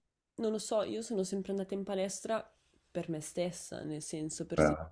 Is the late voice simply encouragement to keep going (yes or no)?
yes